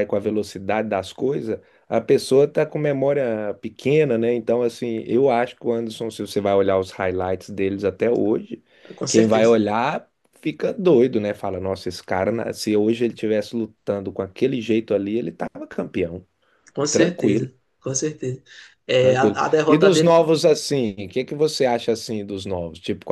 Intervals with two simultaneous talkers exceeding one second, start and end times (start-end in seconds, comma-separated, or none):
19.0-20.3